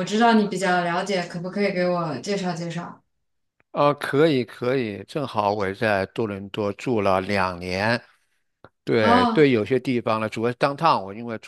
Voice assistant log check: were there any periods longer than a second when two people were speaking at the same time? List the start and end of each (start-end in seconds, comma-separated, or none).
none